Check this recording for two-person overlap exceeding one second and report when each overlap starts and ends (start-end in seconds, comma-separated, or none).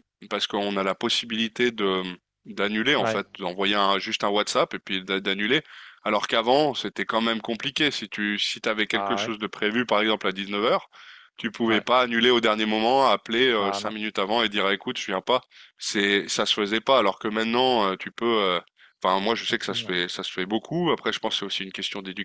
none